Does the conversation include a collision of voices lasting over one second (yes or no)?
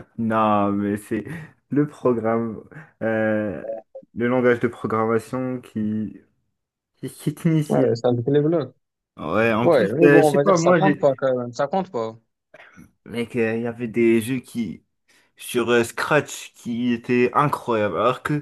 yes